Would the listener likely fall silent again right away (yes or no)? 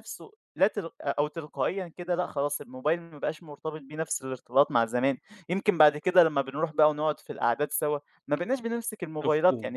yes